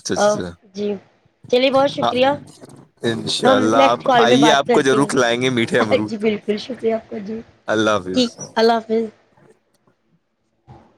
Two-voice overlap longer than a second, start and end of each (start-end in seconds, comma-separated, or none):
3.4-6.2